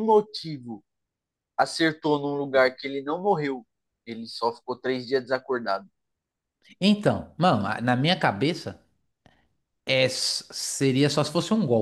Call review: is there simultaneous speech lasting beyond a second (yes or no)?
no